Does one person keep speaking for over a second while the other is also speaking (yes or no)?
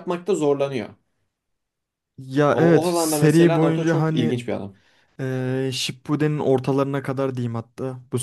yes